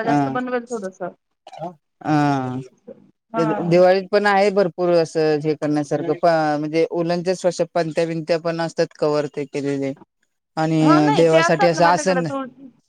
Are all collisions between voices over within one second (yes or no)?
no